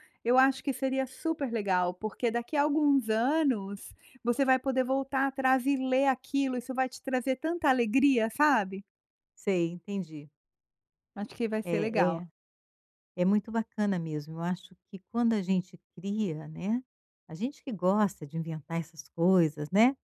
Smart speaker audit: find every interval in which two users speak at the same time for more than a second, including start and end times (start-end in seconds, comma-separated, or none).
none